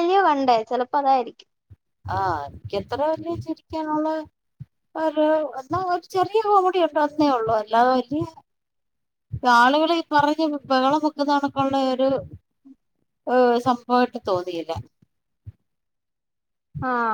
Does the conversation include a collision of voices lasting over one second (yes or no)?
no